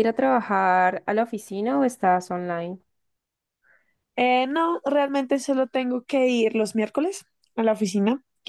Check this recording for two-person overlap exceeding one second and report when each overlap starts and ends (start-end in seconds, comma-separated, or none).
none